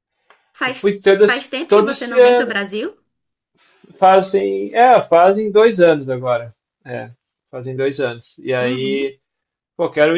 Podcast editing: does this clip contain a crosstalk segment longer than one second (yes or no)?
yes